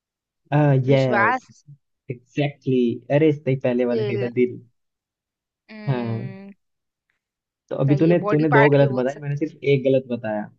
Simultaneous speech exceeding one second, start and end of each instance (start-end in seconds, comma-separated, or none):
7.9-9.4